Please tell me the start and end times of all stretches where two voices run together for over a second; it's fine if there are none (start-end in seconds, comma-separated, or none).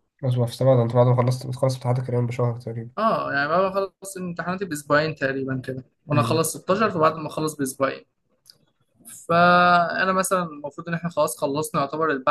none